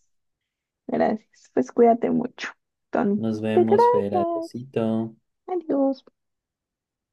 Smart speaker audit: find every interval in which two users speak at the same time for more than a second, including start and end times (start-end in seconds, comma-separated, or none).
3.2-4.5